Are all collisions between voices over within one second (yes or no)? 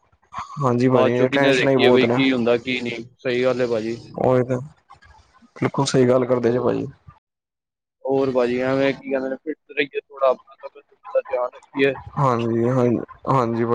no